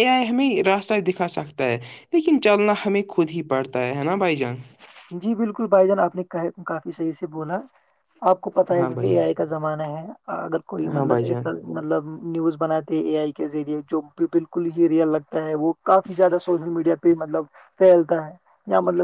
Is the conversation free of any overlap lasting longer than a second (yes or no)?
yes